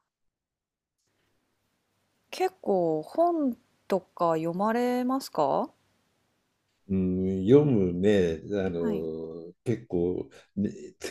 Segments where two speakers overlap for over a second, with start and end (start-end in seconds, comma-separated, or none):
none